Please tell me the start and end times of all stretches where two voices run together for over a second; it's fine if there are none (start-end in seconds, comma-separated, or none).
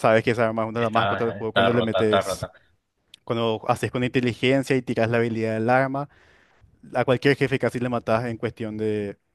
0.8-2.5